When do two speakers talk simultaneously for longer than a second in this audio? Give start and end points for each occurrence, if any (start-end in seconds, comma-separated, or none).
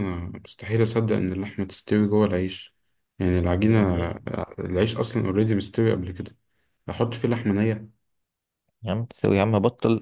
none